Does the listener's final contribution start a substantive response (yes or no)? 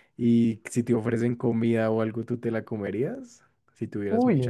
yes